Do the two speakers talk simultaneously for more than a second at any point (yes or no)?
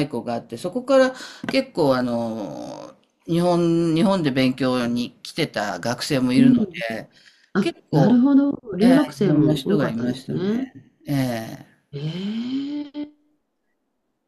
yes